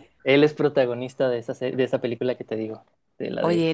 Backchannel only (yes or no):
no